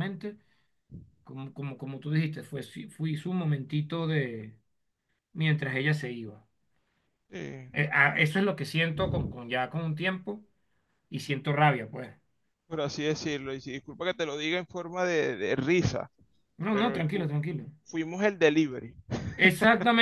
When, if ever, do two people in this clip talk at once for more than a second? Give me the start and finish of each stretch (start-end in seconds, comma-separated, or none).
none